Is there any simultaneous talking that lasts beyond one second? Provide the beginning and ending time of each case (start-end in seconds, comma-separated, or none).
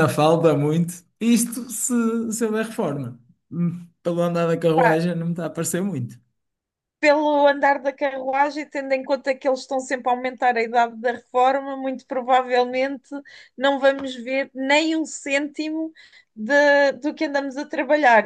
none